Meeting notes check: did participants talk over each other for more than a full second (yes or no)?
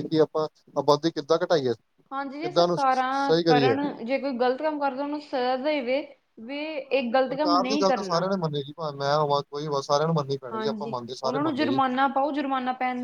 yes